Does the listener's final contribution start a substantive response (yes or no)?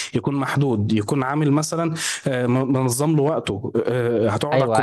yes